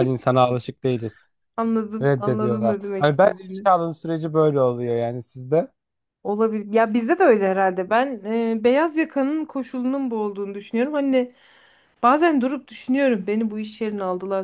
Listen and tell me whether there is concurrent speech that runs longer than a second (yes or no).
yes